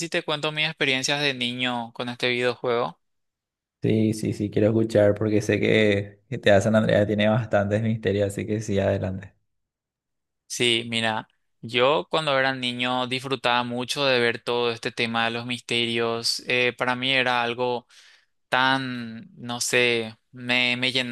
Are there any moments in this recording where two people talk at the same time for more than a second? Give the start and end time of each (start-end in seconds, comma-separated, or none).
none